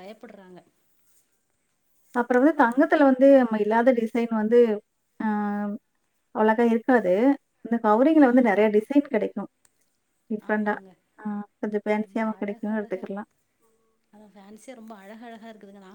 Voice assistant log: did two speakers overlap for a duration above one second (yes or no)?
yes